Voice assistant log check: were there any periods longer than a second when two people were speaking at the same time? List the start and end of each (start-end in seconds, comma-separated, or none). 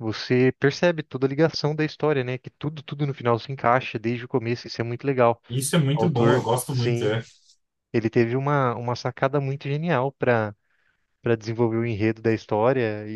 5.9-7.2